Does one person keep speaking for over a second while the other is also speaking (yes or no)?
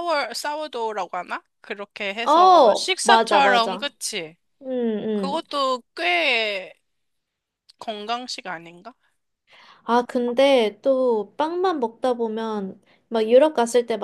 yes